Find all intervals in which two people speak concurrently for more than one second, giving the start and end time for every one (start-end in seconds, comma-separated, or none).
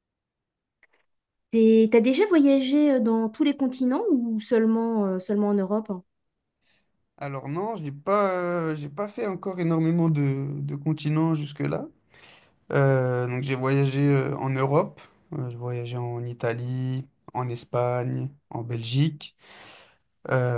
none